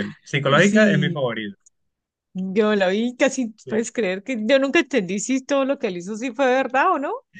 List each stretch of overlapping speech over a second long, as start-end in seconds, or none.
none